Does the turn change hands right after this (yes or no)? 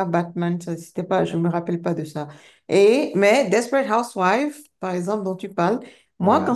no